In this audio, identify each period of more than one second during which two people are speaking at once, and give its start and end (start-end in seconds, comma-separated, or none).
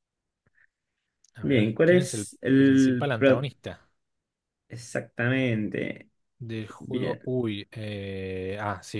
1.4-3.5